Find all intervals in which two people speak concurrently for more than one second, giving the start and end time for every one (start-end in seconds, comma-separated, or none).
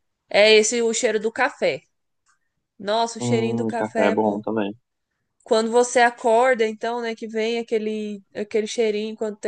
3.2-4.4